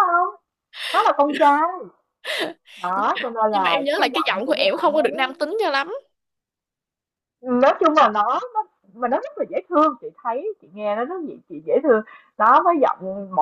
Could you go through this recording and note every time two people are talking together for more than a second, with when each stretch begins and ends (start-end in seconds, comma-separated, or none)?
3.0-5.2